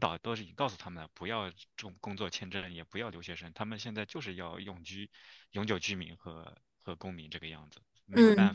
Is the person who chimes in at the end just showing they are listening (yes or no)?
no